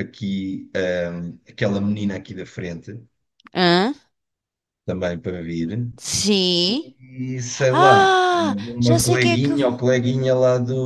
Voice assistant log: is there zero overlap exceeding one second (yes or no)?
no